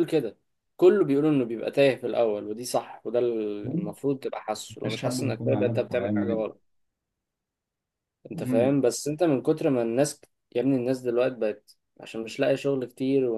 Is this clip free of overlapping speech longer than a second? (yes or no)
no